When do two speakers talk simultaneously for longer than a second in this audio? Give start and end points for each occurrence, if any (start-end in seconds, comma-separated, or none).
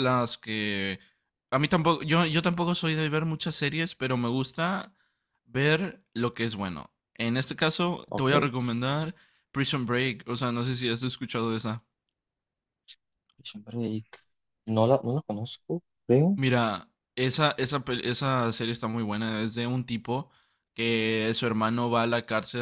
none